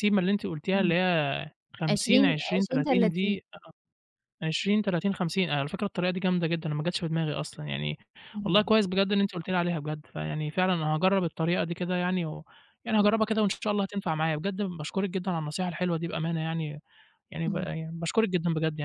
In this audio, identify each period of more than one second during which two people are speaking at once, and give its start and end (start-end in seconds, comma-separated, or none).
1.9-3.4